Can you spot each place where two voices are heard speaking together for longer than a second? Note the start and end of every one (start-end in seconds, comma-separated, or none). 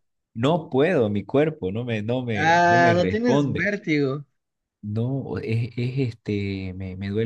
2.4-3.7